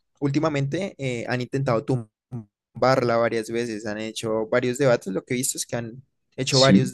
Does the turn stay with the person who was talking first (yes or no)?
yes